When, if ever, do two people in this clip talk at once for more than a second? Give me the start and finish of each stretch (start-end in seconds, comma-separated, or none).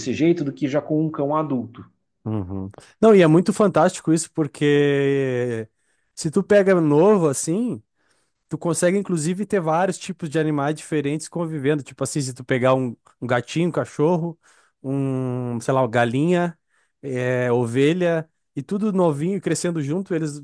none